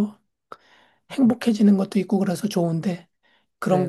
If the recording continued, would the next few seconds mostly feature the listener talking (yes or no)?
no